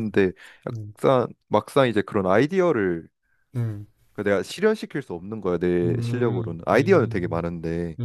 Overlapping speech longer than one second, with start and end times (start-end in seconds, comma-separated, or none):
5.8-7.4